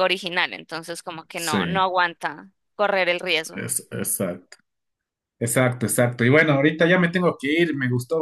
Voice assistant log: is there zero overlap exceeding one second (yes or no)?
yes